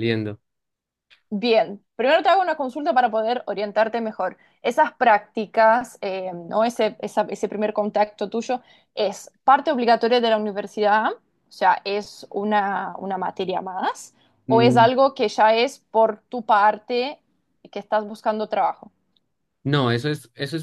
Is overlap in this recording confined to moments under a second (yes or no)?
yes